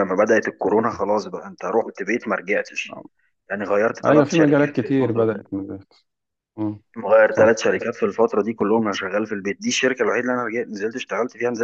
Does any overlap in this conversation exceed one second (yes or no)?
yes